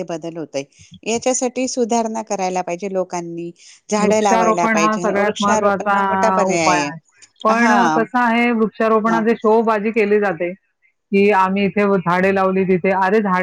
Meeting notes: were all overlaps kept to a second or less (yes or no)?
no